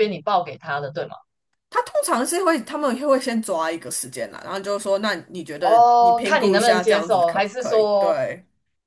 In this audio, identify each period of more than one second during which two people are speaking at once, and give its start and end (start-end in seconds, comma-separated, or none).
5.6-8.2